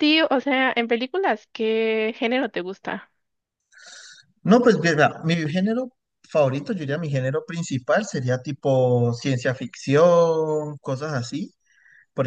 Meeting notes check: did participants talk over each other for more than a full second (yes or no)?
no